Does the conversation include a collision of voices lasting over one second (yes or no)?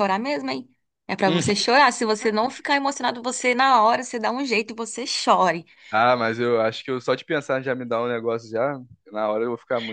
no